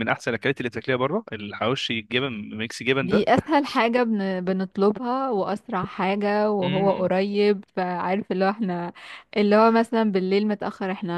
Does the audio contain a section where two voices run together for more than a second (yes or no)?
no